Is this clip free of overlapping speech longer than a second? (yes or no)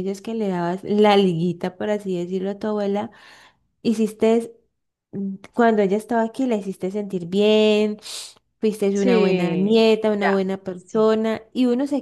no